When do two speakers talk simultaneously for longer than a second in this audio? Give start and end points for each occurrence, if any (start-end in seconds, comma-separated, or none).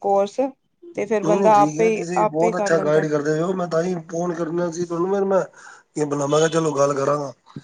1.2-3.1